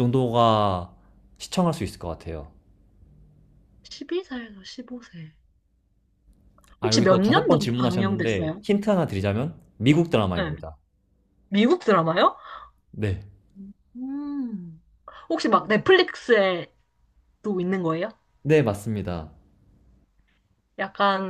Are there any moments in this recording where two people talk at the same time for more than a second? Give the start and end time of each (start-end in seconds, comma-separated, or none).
6.8-8.6